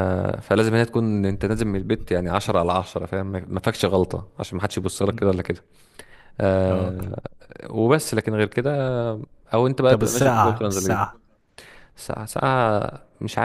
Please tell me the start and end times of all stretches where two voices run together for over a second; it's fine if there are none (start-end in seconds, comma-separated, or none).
9.9-11.1